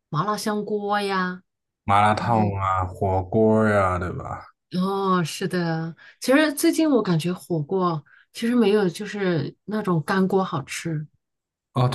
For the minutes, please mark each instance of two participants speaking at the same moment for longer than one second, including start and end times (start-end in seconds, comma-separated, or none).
none